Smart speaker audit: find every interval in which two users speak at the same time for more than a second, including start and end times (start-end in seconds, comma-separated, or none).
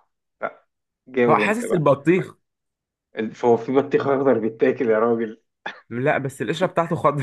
none